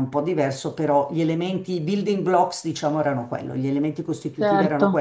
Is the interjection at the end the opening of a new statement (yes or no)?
no